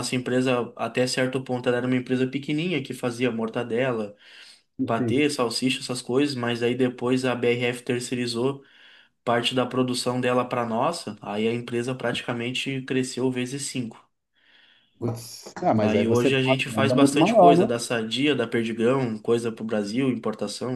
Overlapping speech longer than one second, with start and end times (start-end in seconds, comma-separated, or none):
15.8-17.7